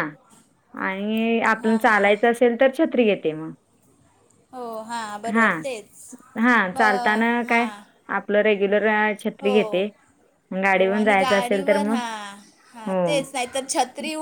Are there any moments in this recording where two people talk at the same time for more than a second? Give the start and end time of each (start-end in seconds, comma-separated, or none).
10.8-12.0